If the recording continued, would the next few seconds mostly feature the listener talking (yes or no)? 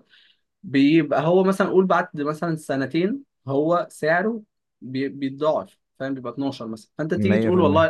no